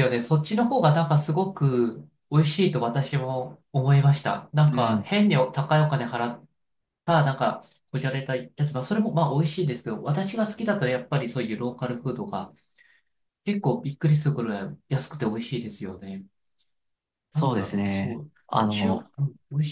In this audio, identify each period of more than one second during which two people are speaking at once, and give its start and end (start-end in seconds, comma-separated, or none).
17.3-19.1